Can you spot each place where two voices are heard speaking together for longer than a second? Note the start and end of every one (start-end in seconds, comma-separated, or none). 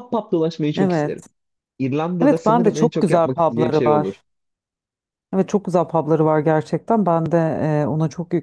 2.2-4.1